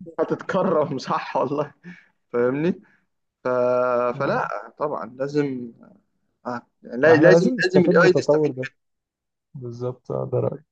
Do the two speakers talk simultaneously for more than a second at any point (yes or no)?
yes